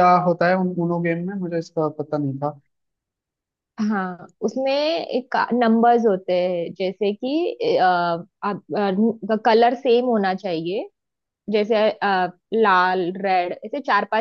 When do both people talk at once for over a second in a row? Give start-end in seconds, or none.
none